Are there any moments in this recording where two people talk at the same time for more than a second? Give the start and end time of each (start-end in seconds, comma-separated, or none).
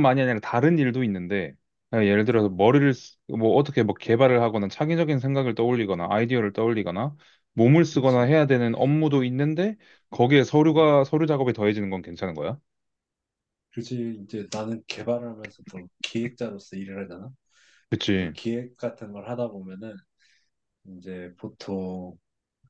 none